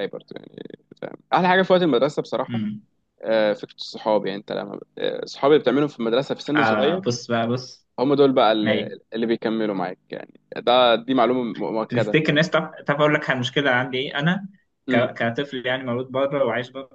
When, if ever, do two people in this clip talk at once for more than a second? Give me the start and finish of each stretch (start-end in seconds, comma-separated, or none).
none